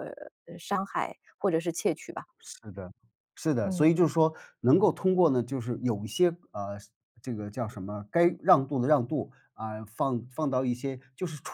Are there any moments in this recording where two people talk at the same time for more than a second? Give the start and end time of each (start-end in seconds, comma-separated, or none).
none